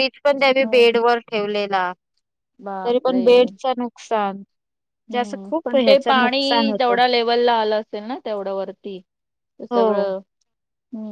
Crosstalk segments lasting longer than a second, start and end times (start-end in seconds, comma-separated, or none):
5.1-7.0